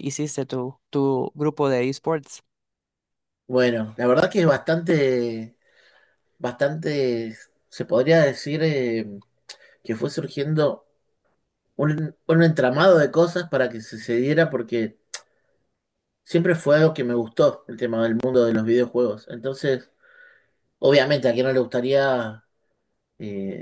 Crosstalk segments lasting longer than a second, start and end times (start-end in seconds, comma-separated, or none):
none